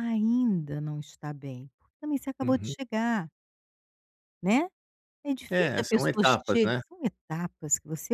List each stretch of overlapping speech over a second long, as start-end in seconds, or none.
5.5-6.8